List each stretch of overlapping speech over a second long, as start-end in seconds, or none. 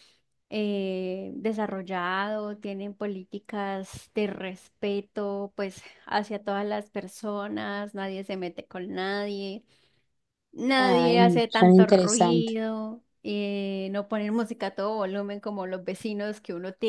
10.8-12.5